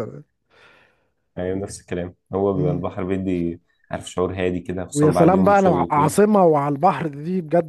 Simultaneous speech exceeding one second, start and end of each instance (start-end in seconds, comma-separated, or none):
4.9-6.2